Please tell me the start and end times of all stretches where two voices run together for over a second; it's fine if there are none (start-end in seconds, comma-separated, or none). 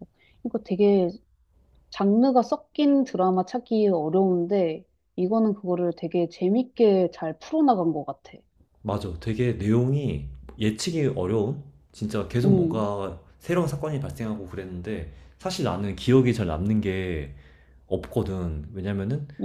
none